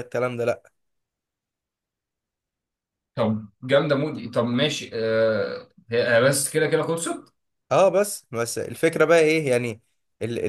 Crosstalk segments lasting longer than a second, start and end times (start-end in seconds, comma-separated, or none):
none